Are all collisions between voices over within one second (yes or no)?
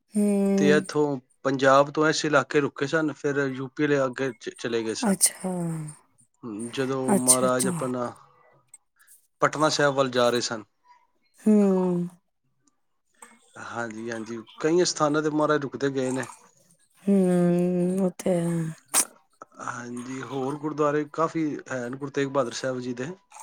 yes